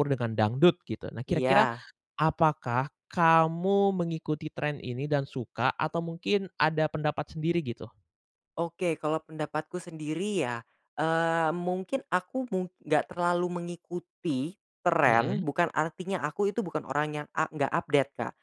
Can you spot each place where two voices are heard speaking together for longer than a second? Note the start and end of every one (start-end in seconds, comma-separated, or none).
none